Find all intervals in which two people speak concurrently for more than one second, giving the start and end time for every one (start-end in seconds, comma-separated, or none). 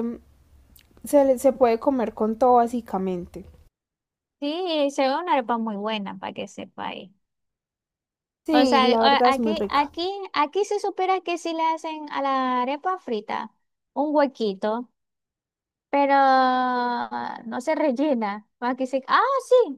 8.5-9.9